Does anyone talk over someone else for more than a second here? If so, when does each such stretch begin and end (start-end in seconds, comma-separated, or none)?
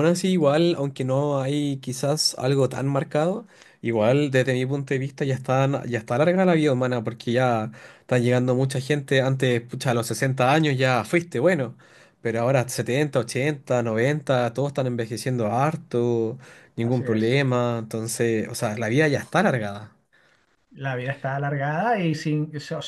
none